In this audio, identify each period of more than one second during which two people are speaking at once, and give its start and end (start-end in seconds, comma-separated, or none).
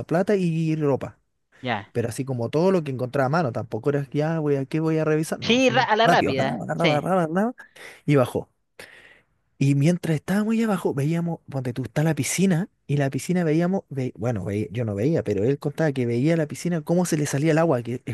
5.4-7.1